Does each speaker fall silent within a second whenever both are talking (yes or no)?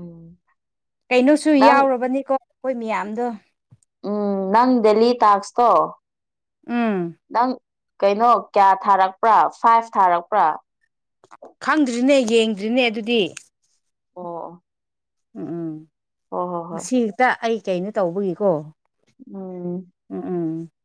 yes